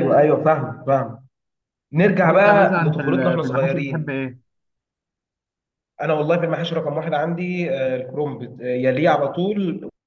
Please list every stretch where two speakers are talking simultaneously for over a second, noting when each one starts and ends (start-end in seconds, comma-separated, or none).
2.2-4.1